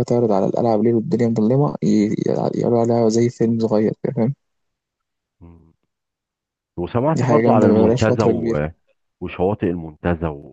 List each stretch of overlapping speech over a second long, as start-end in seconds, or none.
7.2-8.6